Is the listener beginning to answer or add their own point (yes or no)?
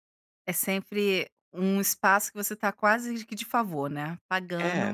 yes